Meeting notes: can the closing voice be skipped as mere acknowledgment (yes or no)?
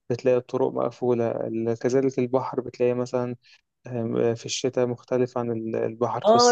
no